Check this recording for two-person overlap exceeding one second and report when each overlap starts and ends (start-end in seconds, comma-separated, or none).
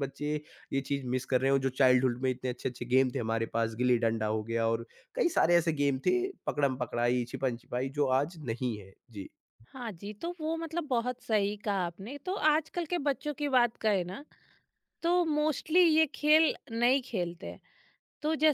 none